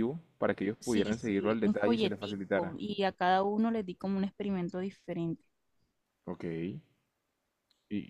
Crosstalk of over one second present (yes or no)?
yes